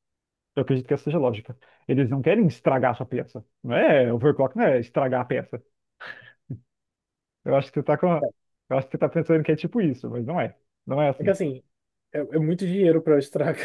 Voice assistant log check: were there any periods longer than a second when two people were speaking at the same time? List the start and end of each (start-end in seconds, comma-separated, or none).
none